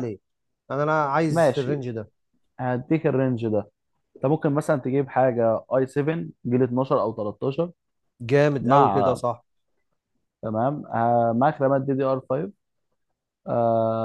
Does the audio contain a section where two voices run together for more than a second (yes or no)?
no